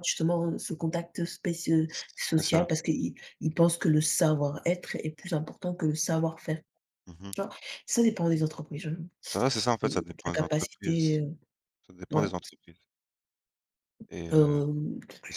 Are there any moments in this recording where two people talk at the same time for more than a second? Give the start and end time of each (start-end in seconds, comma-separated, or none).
9.8-11.2